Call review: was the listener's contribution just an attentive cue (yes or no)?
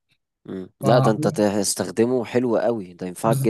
no